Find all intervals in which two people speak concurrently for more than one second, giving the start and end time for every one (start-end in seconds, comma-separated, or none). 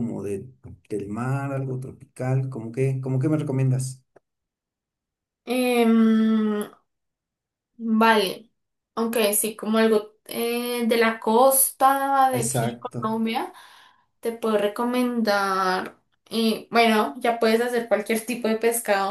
none